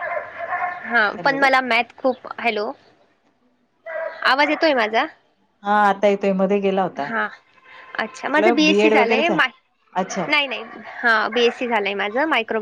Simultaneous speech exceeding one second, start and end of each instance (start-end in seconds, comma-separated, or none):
8.1-9.4